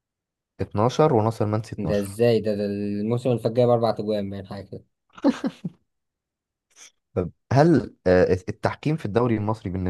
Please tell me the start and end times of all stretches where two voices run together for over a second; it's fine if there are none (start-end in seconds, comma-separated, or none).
none